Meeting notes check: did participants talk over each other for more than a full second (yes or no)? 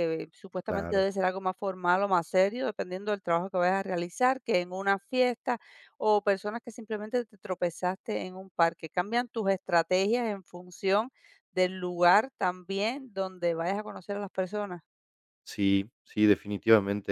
no